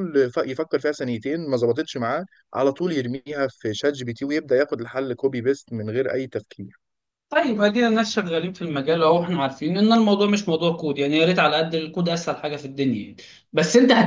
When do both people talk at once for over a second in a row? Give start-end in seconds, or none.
none